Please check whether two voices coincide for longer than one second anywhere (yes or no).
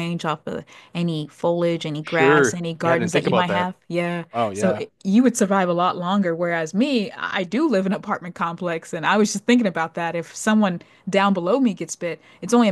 yes